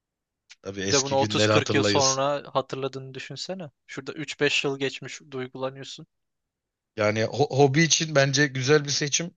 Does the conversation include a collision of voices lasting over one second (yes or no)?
yes